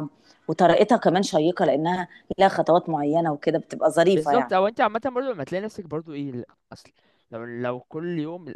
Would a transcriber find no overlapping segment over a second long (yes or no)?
yes